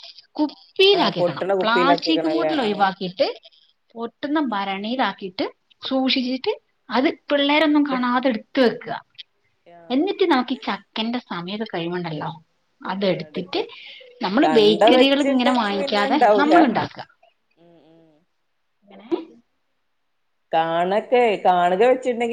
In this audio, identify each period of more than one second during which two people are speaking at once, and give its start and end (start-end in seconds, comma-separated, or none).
1.0-2.8, 14.4-16.6